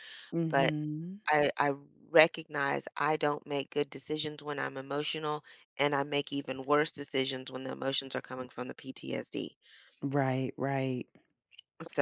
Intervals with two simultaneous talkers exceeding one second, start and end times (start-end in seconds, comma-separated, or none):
none